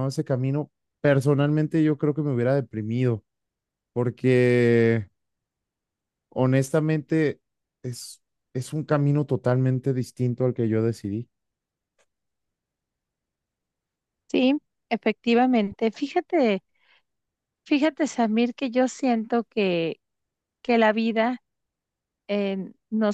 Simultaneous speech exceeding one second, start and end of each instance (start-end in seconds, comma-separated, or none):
none